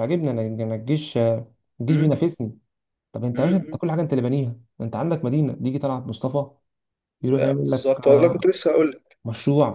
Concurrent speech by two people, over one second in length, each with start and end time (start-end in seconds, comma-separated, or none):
7.4-8.6